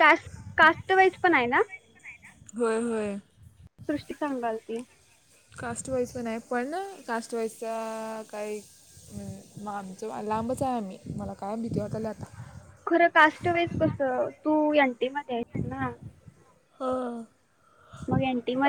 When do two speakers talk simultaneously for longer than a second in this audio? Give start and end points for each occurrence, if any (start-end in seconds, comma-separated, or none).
none